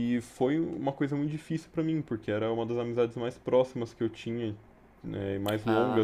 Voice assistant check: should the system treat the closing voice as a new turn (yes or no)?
no